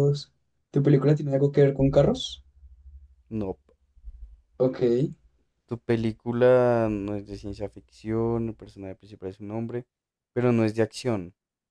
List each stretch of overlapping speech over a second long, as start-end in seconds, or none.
none